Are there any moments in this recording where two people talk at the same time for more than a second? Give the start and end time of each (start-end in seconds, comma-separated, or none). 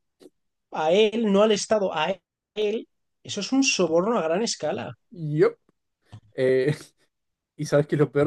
none